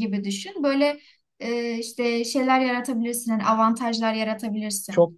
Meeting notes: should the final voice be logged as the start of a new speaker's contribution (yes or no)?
yes